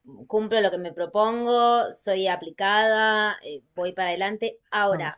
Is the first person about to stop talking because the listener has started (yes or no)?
no